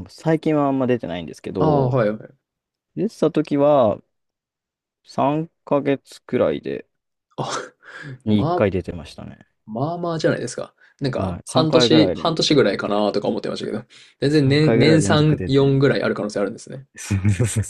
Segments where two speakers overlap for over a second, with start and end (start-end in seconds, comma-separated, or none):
11.2-13.1, 14.3-15.8